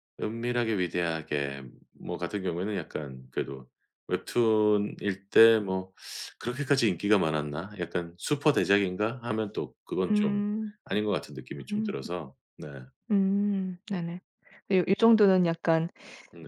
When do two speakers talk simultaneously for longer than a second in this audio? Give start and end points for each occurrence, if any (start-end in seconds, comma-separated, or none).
none